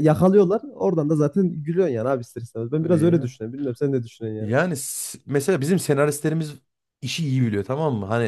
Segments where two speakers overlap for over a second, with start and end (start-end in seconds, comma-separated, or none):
none